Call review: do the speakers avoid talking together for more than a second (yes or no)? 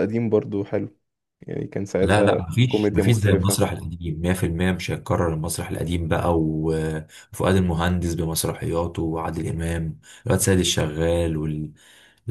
no